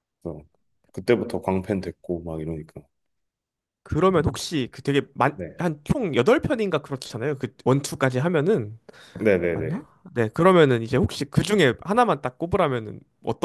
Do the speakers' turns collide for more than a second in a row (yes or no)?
no